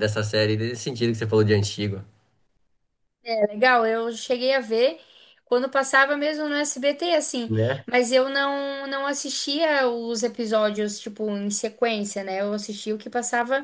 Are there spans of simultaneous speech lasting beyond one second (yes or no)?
no